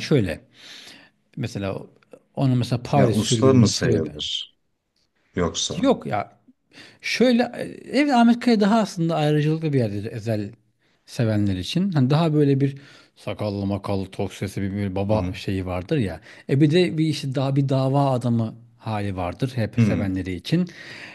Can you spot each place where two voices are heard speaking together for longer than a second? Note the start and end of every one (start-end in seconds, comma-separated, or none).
2.9-4.1